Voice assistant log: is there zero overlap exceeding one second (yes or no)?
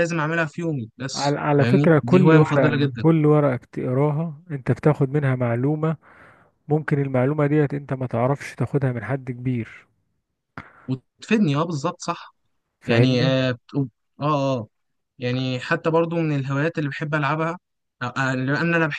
no